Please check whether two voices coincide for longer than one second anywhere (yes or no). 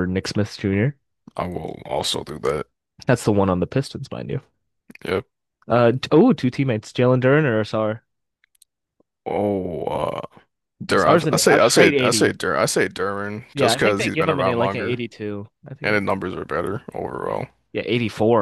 yes